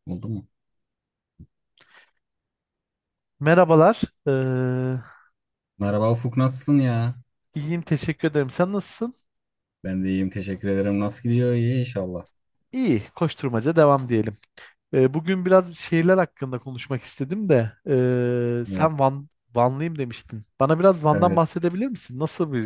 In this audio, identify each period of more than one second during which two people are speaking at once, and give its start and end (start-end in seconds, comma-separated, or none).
none